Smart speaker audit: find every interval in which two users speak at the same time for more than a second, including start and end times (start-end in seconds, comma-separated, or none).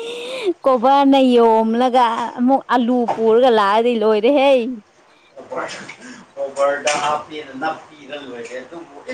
none